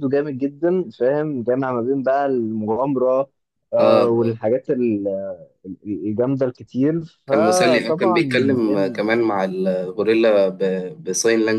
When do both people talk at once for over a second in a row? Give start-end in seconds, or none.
7.3-9.0